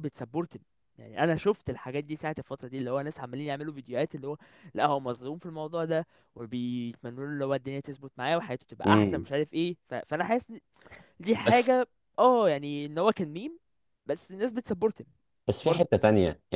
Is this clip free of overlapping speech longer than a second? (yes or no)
yes